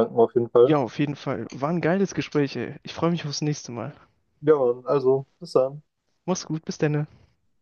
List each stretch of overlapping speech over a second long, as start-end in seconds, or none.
none